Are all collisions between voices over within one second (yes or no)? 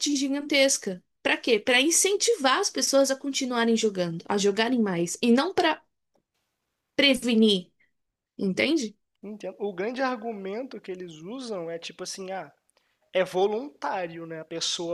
yes